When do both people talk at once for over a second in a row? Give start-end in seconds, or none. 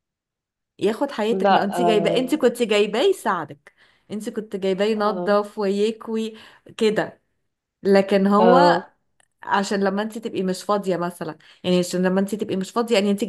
1.3-2.5